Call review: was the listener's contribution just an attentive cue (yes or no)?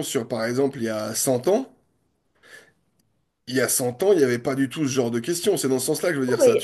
no